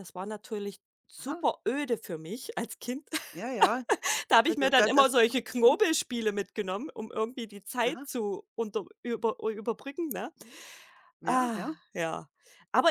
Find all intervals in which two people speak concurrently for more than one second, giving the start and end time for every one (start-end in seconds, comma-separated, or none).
4.5-5.8